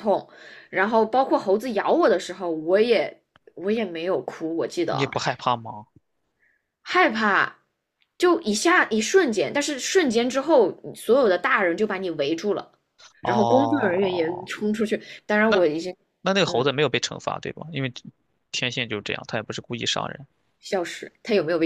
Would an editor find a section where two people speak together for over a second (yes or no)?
yes